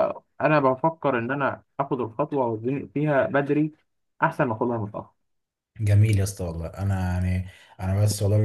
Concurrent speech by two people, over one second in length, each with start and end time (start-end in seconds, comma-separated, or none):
none